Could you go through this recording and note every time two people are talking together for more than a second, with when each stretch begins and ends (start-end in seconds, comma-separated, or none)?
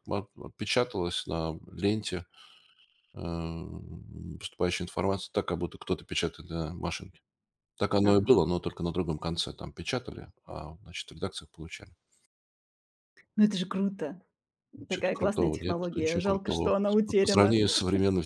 14.9-17.6